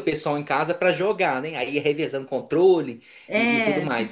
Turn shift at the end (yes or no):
no